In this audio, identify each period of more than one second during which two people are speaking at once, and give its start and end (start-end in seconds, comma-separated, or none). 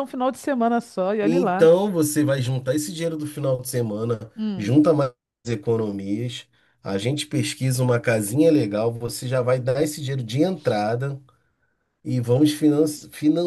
none